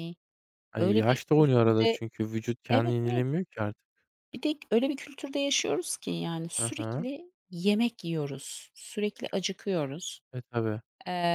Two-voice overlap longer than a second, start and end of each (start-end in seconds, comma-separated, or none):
0.8-2.0